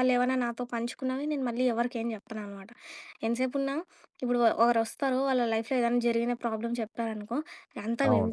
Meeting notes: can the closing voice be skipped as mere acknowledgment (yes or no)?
yes